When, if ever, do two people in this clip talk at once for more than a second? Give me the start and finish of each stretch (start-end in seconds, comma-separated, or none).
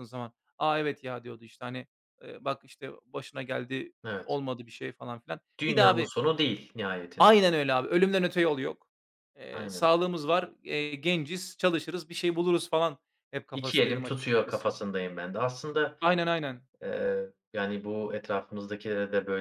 13.5-14.8